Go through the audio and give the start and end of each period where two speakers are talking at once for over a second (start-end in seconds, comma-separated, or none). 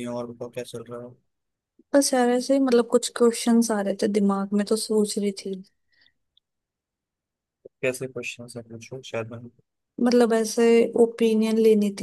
none